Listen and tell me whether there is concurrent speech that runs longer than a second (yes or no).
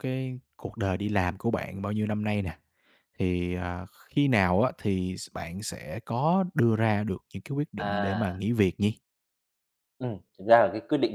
no